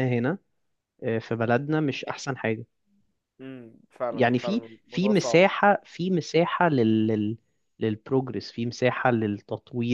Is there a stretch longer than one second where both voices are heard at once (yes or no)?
yes